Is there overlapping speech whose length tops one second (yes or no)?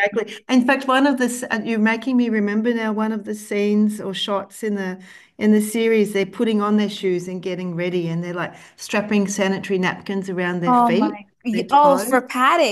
yes